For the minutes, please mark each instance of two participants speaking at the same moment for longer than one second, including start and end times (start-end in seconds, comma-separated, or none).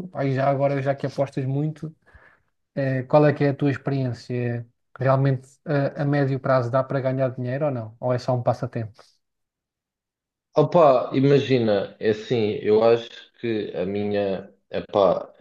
none